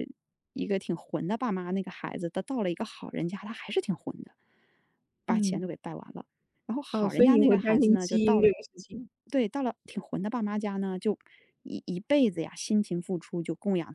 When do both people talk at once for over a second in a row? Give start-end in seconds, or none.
6.9-8.5